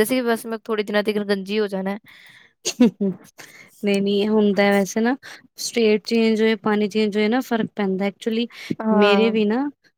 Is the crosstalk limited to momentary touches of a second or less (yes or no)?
yes